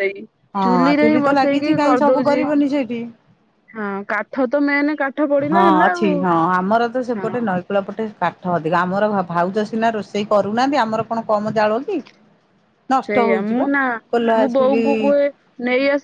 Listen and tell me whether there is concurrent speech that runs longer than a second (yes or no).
yes